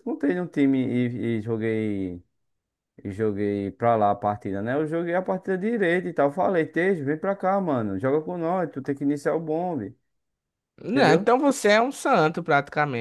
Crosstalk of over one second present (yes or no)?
no